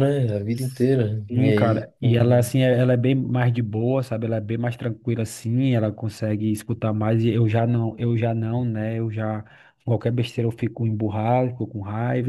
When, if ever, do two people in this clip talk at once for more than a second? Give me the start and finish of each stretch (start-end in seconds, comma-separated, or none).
1.3-2.5